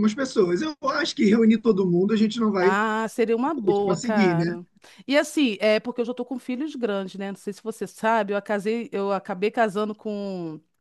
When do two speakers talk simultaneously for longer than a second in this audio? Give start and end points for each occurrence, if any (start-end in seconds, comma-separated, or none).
3.4-4.6